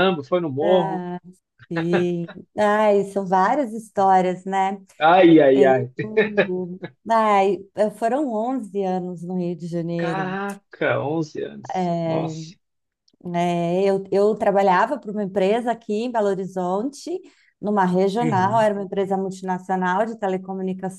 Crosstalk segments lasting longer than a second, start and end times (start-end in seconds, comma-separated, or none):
none